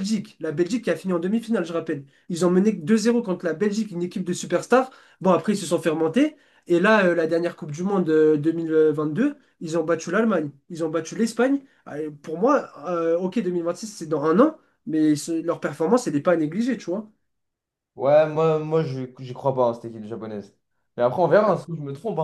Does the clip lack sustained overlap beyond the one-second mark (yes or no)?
yes